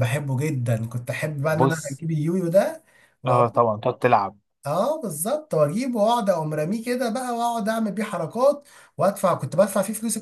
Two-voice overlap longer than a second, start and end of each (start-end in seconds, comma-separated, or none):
none